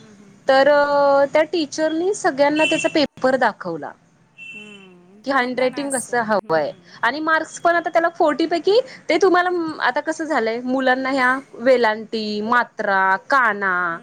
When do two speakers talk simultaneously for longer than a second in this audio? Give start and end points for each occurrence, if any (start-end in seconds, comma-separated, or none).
5.2-6.7